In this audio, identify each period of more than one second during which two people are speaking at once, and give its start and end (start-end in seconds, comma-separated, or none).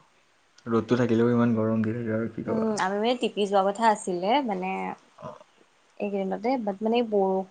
none